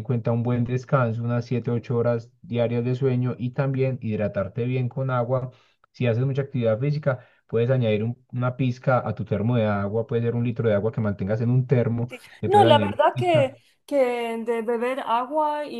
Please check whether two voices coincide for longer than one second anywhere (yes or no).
yes